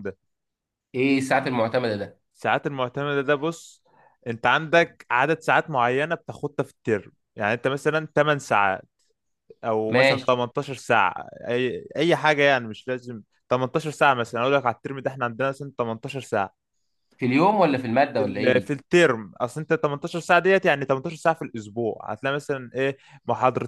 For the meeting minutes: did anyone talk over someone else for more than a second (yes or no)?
no